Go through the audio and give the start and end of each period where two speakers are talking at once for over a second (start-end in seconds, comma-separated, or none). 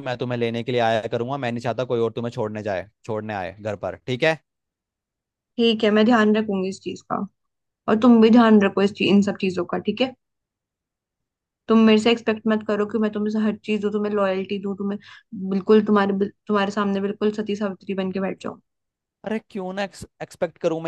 none